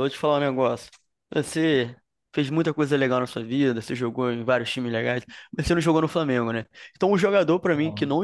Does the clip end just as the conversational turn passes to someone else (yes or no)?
no